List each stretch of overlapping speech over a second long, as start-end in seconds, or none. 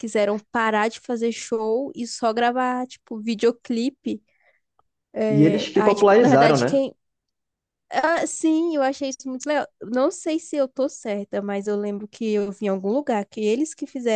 5.3-6.8